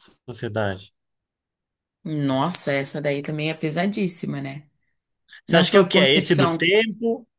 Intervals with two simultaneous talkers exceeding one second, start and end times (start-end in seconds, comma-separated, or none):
5.5-6.7